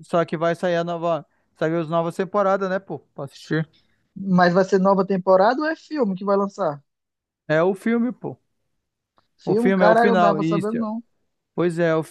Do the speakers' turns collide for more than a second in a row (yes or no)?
yes